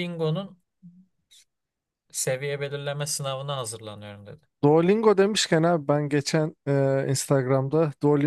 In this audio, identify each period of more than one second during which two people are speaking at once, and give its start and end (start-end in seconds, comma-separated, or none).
none